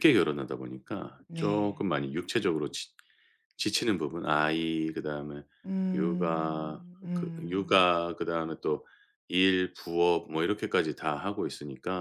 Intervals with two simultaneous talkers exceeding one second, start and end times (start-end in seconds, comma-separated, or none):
5.9-7.9